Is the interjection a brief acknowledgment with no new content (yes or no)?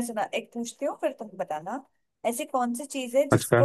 yes